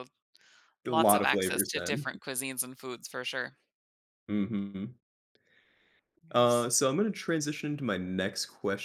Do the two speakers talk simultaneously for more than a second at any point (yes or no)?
yes